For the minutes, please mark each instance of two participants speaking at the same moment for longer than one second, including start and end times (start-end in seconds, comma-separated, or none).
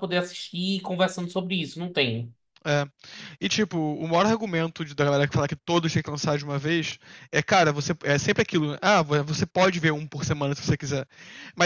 none